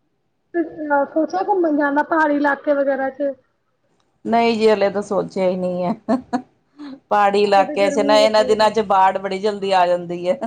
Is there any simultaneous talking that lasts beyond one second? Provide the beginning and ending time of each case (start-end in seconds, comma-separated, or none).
7.4-8.7